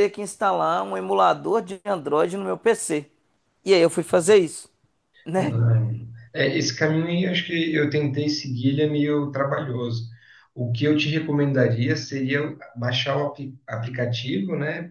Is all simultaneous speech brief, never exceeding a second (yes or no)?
yes